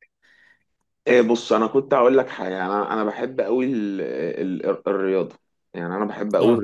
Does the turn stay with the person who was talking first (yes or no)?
yes